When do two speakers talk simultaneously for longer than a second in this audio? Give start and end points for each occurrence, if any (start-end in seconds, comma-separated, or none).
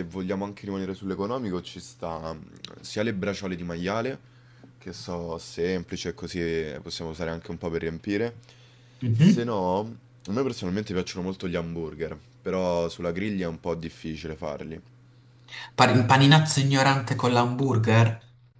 none